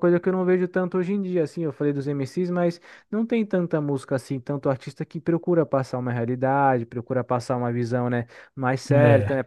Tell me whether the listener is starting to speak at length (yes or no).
no